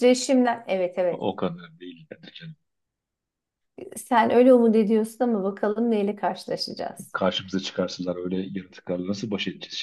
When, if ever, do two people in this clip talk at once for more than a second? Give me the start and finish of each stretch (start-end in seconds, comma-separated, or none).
none